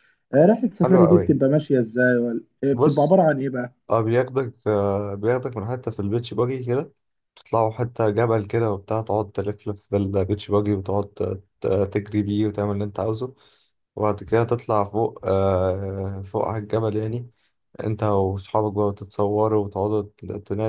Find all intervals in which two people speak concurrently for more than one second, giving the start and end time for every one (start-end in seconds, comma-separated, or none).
none